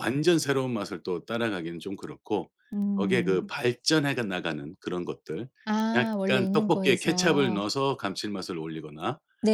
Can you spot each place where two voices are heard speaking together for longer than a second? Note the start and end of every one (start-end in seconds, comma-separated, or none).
5.9-7.6